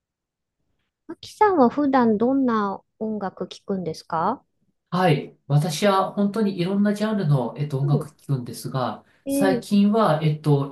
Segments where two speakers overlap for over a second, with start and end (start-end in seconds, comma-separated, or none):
none